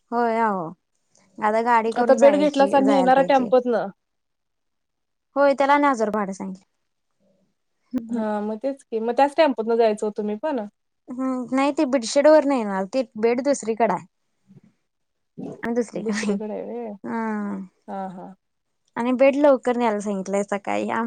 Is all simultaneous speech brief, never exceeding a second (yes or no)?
no